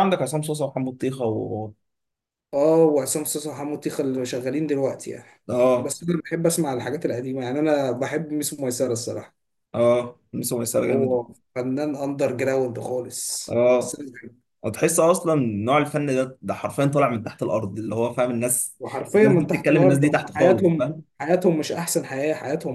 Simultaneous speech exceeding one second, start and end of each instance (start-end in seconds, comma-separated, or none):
19.1-21.0